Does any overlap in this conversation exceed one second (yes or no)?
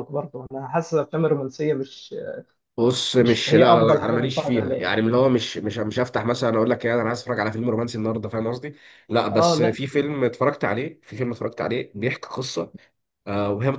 yes